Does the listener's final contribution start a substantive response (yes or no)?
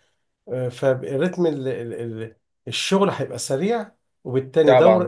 no